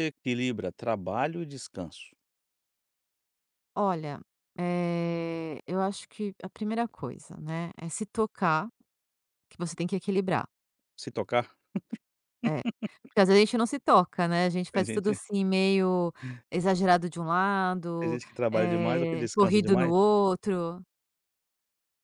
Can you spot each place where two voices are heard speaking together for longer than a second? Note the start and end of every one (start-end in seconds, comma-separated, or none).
18.0-19.9